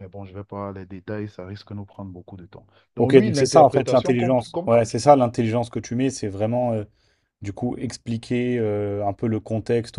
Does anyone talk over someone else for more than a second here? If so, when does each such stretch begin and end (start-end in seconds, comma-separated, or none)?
3.0-4.8